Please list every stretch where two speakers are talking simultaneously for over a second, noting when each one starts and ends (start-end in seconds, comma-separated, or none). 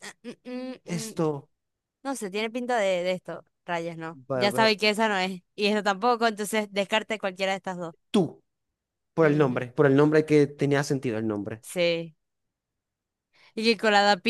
none